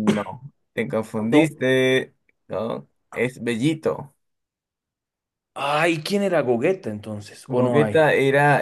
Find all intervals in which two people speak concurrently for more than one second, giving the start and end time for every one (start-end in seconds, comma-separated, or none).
none